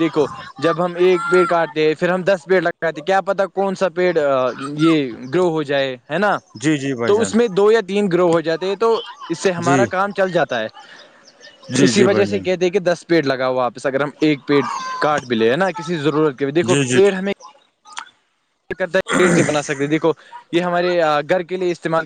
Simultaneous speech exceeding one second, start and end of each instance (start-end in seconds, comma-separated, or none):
none